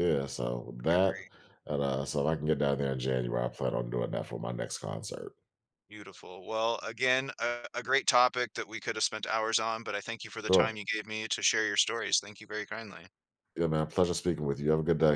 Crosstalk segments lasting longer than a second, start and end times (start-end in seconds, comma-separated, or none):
none